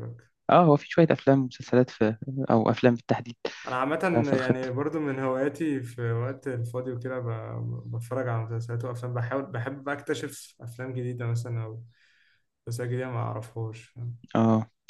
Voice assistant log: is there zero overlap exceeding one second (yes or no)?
yes